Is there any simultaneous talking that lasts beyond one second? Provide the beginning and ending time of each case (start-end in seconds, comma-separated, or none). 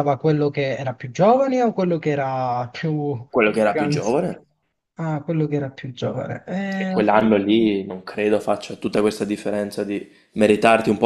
none